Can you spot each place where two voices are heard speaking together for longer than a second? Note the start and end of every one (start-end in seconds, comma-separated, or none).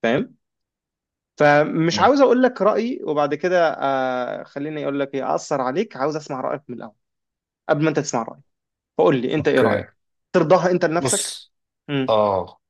none